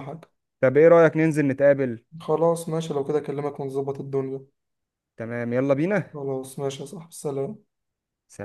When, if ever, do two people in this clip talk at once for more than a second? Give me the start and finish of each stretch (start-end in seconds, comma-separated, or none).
none